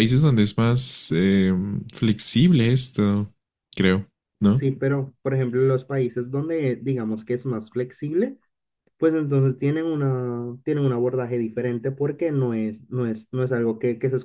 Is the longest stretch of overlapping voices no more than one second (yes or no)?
yes